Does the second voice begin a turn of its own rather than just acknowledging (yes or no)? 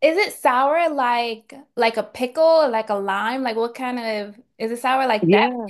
no